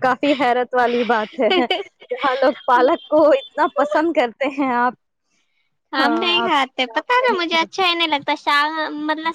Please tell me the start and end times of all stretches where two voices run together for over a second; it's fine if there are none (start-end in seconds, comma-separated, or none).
6.0-7.9